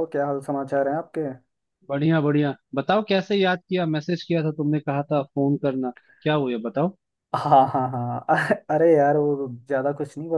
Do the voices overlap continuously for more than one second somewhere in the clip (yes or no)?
no